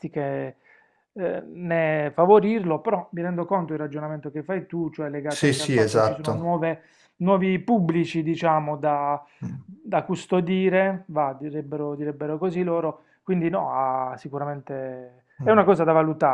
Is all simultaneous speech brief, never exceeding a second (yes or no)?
no